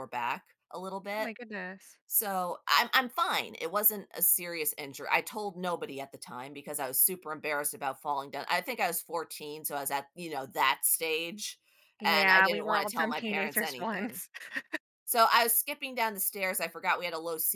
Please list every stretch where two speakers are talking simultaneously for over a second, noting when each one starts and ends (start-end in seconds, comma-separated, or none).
12.1-14.2